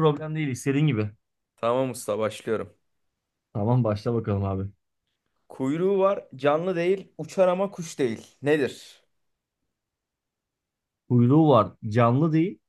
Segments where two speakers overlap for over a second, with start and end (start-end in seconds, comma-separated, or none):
none